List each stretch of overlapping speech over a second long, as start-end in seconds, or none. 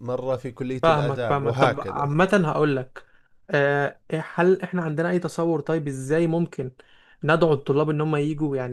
0.8-2.1